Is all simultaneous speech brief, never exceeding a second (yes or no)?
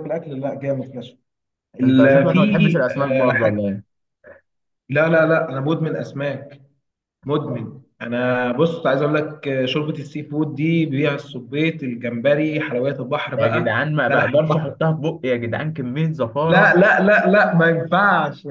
no